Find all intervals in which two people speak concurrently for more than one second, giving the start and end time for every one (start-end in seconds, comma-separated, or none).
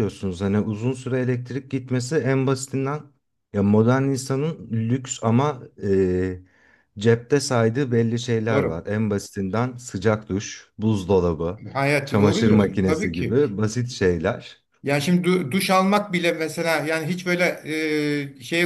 12.0-13.4